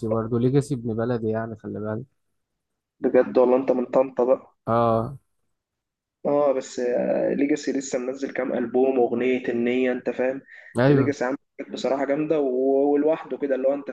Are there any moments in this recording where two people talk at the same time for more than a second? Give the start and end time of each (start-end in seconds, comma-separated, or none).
none